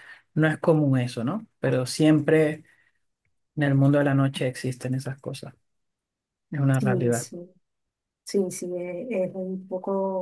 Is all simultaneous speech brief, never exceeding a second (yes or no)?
yes